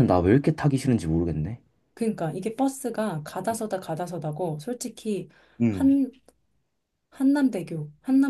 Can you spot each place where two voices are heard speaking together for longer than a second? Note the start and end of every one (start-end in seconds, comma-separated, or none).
none